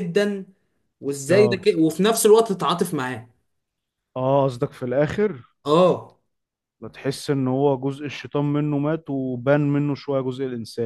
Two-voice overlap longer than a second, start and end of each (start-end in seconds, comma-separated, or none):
none